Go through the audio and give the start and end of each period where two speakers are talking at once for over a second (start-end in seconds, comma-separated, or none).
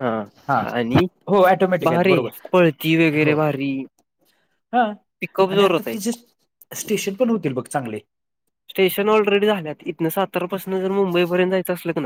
none